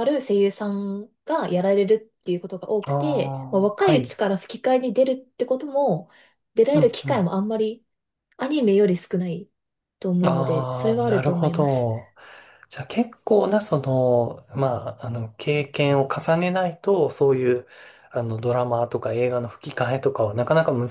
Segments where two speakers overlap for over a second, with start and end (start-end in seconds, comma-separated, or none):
2.8-4.2, 10.2-11.9